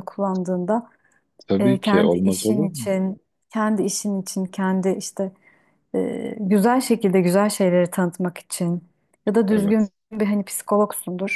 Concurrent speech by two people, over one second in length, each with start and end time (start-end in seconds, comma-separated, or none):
1.6-2.9